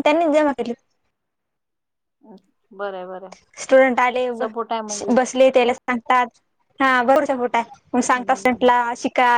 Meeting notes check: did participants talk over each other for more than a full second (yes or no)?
no